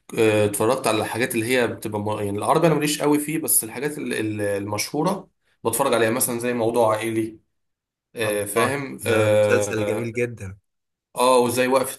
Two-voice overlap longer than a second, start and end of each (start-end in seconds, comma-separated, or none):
8.2-10.1